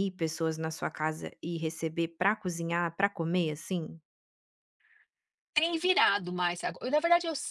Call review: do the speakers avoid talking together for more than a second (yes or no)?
yes